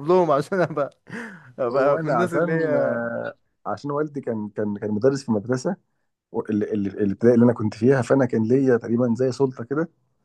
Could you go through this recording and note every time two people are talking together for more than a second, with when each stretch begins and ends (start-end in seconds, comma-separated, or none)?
1.7-3.0